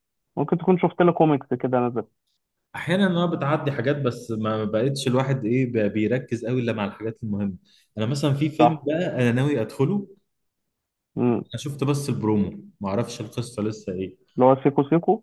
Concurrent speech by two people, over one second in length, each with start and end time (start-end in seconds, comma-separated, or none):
none